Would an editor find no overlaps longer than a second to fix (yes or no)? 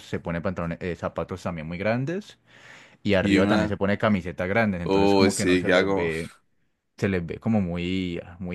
no